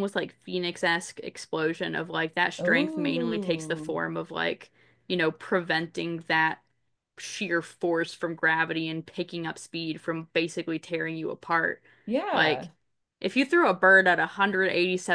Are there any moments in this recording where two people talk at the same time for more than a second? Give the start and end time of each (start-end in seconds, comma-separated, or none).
2.6-3.9